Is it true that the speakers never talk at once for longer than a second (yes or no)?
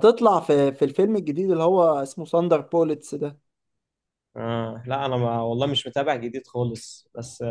yes